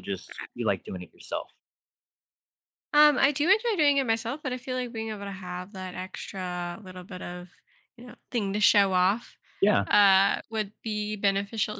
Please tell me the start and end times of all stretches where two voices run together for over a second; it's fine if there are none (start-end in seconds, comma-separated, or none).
none